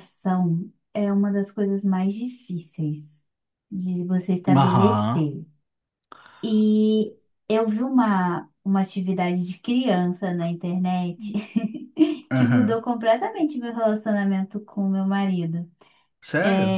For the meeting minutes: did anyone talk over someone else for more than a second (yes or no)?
no